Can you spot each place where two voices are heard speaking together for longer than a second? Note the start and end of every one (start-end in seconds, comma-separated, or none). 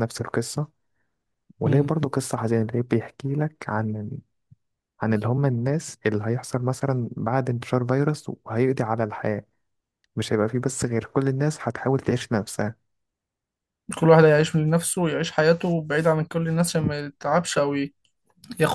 none